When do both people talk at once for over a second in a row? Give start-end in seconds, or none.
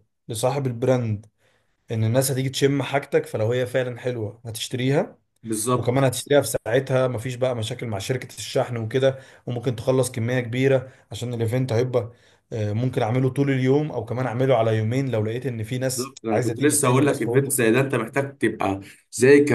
15.7-17.6